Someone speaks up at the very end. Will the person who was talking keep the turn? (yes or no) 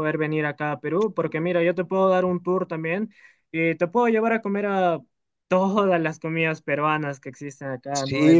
no